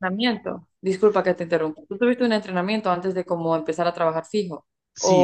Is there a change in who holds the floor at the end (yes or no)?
yes